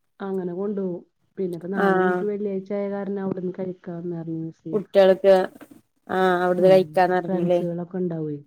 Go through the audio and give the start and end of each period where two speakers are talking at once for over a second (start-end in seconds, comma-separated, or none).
none